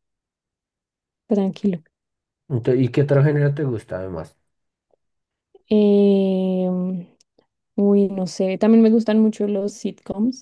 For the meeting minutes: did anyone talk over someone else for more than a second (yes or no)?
no